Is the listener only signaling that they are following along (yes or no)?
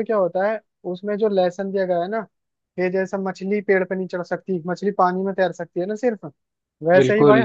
yes